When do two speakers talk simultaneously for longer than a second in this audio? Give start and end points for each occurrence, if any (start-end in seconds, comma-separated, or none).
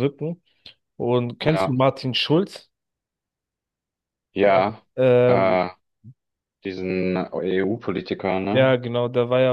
none